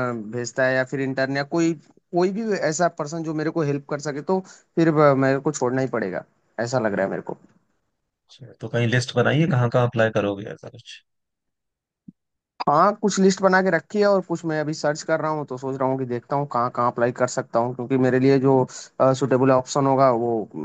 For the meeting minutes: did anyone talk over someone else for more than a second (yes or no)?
no